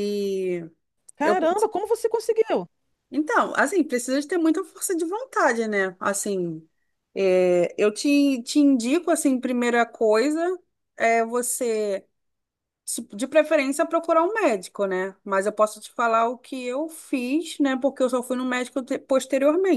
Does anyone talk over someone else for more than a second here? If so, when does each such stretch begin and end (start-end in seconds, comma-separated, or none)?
none